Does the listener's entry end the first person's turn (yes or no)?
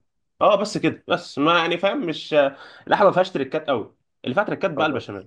no